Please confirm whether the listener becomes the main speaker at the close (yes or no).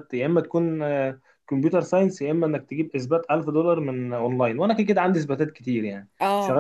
no